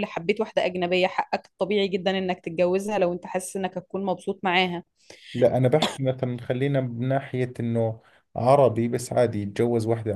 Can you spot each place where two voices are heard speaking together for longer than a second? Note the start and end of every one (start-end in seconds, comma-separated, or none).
none